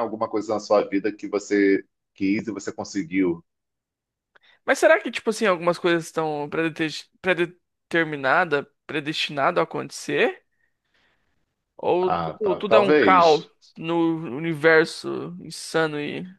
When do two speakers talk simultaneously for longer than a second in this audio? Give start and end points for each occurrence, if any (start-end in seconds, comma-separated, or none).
12.0-13.5